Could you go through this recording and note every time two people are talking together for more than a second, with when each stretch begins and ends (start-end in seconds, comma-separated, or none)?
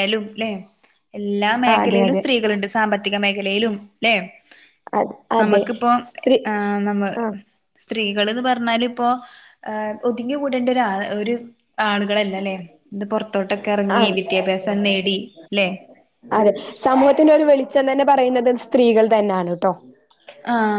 none